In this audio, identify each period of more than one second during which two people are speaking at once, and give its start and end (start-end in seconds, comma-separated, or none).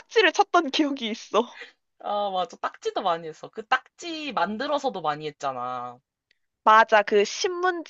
none